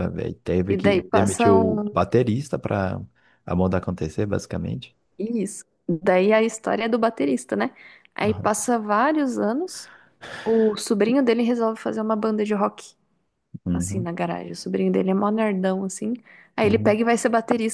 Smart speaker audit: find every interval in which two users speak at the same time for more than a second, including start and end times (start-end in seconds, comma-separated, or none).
0.7-2.0